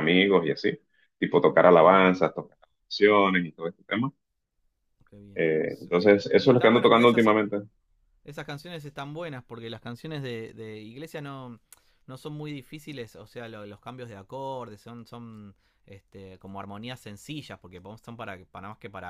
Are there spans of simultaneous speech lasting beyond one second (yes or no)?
yes